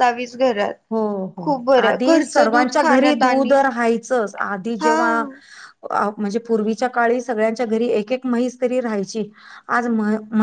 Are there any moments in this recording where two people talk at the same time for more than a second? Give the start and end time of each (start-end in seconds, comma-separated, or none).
1.4-3.6